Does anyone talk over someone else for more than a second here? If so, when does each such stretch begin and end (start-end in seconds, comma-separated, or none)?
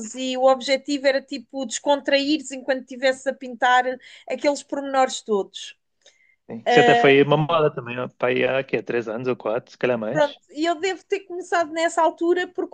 none